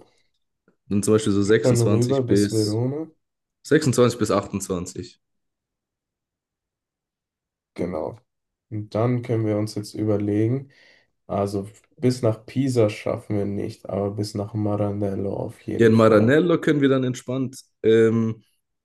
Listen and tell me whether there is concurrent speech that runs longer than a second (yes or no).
yes